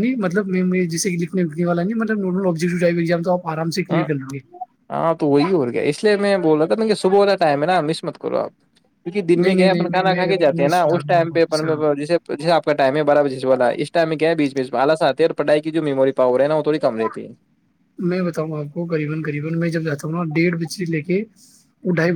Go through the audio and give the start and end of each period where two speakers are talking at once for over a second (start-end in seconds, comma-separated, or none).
9.4-11.8